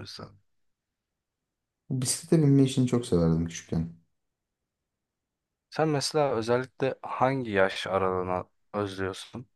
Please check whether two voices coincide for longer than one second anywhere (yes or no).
no